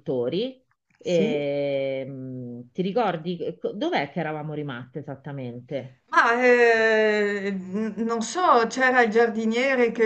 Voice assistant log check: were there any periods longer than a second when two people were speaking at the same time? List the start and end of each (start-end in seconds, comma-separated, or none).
none